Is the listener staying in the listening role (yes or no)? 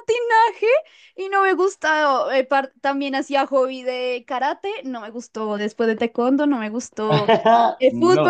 yes